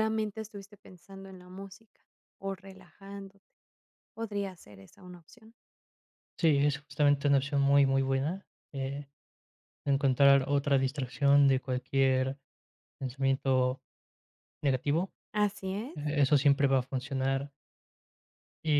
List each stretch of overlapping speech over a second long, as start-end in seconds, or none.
none